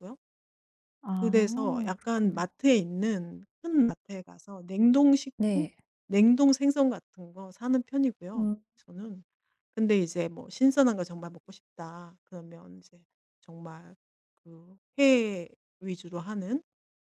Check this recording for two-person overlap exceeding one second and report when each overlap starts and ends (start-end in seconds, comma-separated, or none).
1.1-2.5